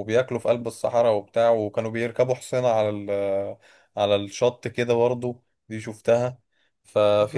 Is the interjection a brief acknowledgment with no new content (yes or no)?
yes